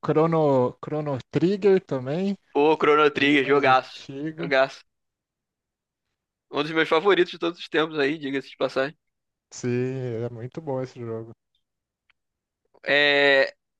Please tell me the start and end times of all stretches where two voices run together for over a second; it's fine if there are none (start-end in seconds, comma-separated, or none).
3.1-4.5